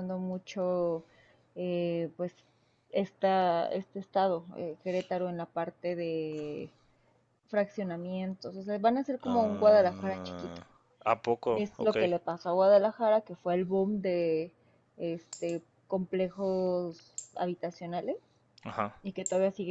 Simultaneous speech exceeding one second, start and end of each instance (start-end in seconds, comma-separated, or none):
9.2-10.6